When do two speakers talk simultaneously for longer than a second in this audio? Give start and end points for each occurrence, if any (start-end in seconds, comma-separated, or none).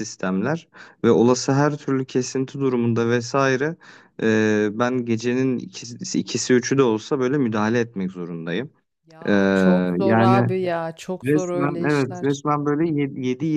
11.2-12.4